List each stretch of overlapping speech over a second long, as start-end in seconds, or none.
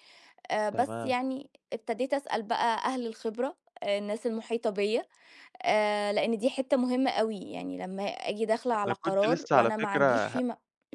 8.9-10.4